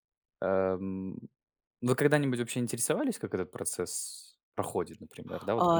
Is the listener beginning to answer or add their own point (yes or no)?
yes